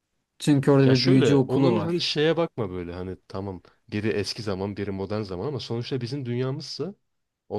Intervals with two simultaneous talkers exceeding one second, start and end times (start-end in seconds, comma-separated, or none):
0.8-2.1